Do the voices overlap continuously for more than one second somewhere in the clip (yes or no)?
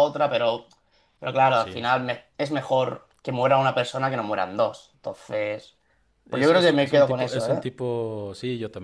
yes